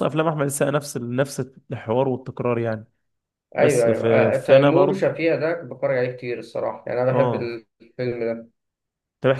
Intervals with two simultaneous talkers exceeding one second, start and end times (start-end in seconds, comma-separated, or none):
3.6-5.1